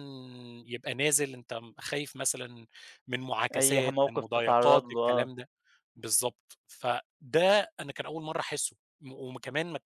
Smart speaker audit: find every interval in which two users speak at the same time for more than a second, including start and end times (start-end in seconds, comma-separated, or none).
3.5-5.3